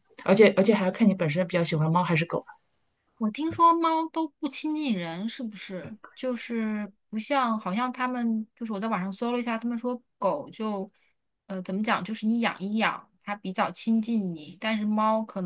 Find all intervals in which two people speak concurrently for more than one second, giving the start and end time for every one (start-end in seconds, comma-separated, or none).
none